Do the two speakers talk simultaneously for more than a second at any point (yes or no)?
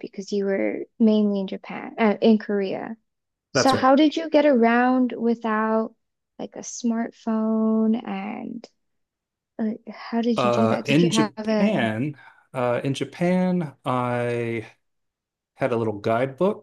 yes